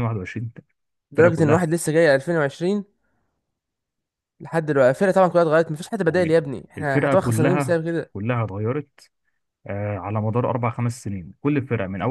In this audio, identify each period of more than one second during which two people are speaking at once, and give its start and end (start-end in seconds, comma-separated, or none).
6.1-8.1